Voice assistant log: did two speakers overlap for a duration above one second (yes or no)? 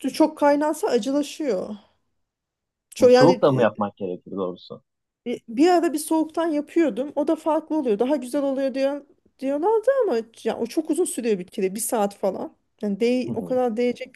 no